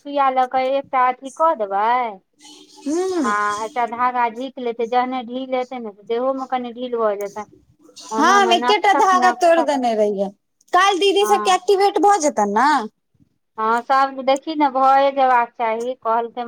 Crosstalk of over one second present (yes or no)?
yes